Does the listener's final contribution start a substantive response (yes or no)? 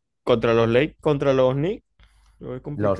yes